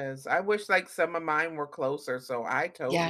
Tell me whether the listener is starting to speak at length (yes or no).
yes